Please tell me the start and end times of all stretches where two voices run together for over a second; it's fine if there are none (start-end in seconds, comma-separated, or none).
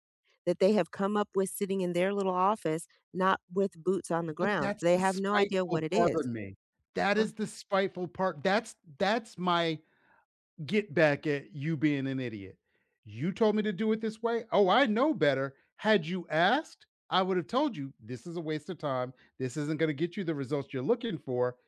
4.4-6.2